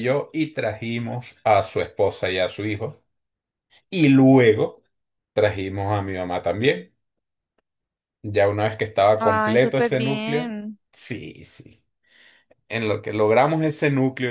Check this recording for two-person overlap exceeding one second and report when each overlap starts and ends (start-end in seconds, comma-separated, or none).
9.2-10.5